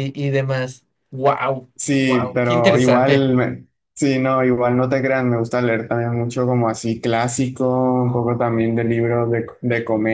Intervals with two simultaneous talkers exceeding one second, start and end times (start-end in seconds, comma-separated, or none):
1.8-3.3